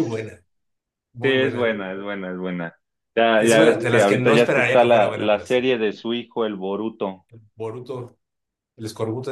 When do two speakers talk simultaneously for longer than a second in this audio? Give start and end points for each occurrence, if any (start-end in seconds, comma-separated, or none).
3.4-5.6